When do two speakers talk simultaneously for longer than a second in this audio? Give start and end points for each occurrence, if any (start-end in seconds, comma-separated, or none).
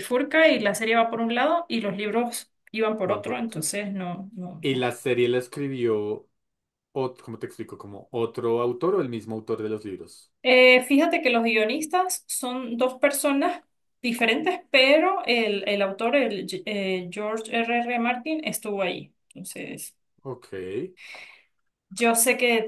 none